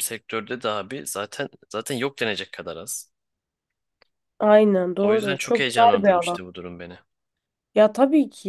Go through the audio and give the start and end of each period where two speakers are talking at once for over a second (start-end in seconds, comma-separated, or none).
5.0-6.4